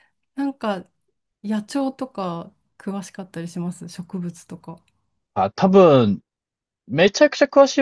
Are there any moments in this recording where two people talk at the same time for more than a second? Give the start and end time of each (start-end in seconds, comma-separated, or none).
none